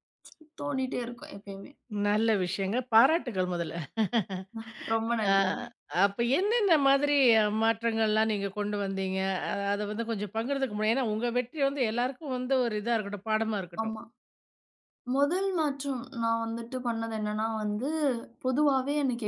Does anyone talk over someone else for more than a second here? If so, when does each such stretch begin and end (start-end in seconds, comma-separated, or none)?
none